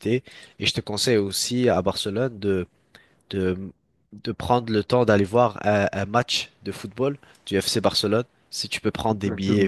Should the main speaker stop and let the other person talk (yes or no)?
yes